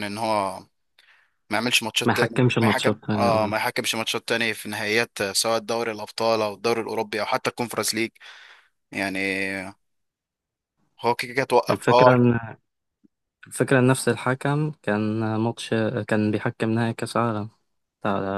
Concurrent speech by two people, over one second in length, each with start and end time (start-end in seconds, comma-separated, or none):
2.1-3.5